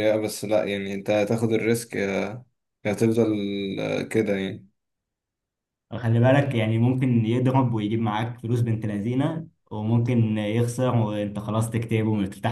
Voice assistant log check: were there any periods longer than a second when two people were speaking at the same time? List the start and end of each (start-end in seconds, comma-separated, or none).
none